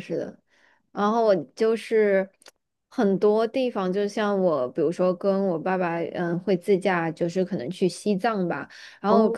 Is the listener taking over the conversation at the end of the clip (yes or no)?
no